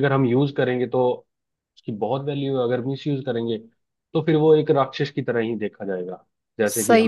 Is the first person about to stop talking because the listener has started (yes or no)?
yes